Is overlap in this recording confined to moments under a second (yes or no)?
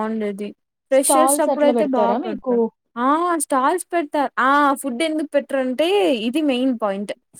no